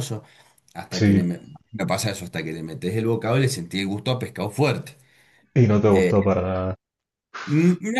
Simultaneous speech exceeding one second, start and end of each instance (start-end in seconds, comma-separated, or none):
none